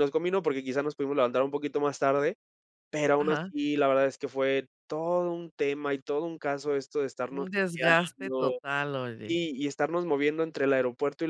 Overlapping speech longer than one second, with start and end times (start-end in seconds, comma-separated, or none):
7.3-8.6